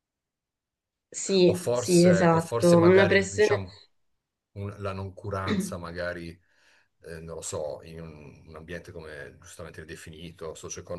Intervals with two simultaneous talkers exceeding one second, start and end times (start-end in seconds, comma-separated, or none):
1.4-3.6